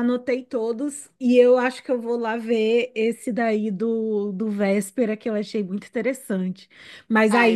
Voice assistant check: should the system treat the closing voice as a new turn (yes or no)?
no